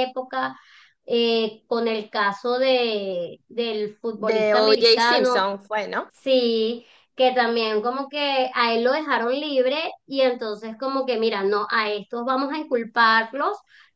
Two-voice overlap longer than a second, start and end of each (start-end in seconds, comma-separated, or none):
4.2-5.5